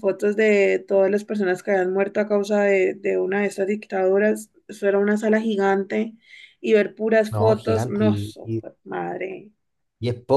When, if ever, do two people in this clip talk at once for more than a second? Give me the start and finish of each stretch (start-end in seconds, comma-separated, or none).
7.3-8.6